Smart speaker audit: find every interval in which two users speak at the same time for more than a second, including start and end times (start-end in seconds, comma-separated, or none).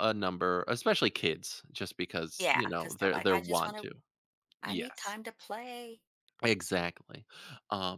2.4-3.9